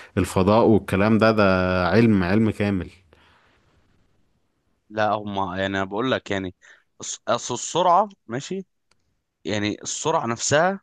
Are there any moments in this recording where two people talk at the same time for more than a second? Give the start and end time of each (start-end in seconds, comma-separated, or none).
none